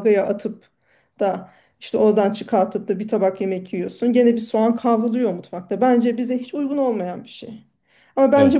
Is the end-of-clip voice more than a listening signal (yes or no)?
no